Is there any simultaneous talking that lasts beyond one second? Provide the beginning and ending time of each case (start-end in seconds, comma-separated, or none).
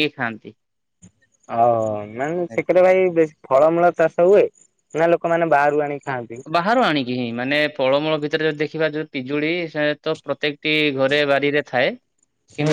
none